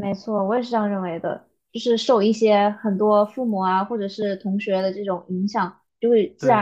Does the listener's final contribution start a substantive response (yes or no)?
no